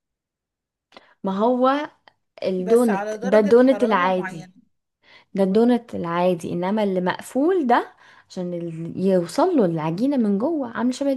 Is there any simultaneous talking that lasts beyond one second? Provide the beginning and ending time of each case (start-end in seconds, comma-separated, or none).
2.6-4.5